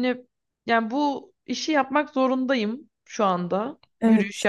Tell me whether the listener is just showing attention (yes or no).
yes